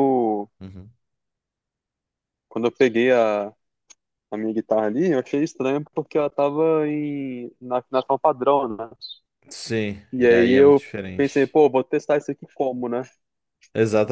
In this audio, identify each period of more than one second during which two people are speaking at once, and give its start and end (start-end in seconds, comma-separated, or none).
10.1-11.5